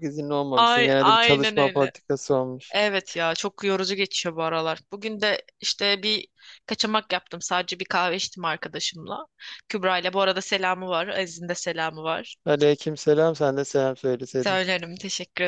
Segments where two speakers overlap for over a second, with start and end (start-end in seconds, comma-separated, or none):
0.6-1.9